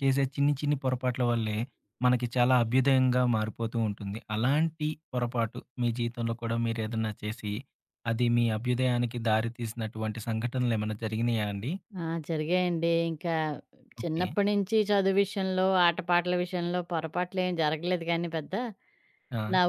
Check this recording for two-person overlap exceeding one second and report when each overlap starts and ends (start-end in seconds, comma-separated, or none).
none